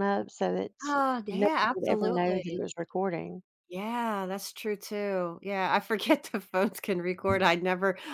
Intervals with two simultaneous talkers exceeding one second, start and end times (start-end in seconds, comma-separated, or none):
1.3-2.6